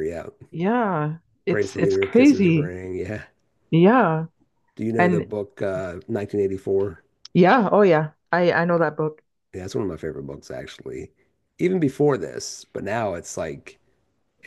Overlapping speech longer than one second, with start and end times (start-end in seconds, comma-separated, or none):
1.5-2.7